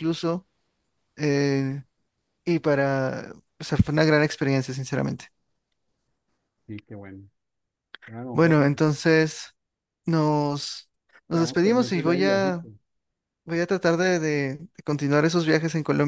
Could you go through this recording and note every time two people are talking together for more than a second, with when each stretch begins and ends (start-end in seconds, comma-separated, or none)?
11.3-12.7